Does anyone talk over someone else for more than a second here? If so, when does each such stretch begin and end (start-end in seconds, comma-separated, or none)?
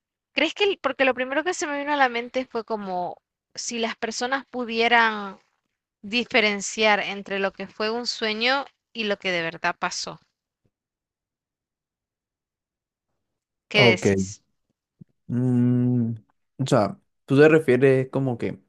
none